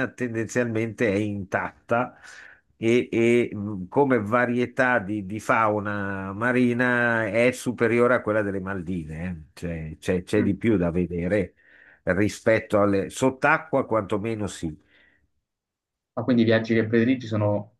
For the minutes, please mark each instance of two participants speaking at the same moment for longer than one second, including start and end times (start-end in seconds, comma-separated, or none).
none